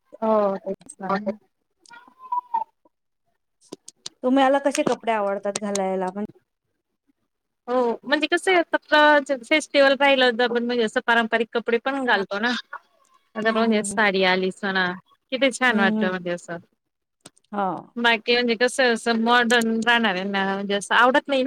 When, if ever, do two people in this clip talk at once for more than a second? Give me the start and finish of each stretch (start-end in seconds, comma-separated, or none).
none